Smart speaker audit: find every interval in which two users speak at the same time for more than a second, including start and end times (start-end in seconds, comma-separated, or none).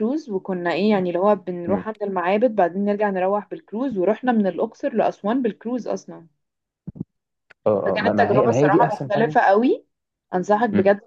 7.8-9.4